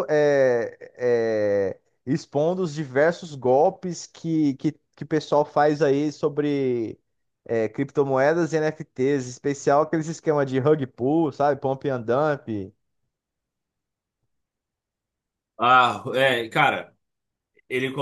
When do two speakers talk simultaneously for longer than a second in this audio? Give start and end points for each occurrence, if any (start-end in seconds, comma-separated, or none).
none